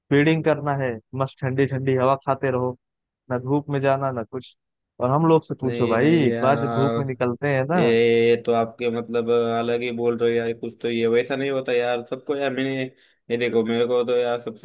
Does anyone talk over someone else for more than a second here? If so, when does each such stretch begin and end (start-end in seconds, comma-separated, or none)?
5.6-7.0